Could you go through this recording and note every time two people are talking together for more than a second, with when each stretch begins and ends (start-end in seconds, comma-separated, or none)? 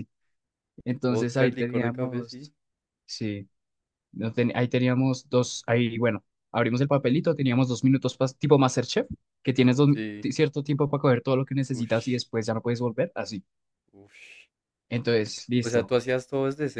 1.1-2.4